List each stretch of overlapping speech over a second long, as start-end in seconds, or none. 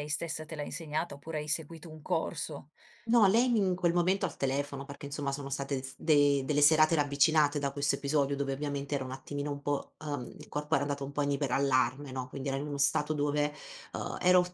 none